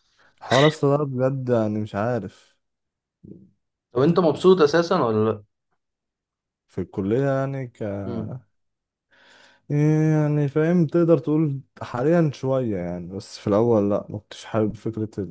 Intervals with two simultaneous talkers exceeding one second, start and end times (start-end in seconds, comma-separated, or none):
none